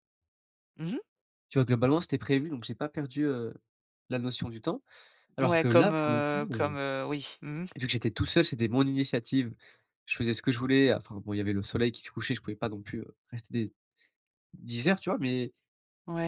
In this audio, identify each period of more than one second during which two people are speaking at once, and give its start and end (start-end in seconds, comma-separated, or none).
5.4-6.8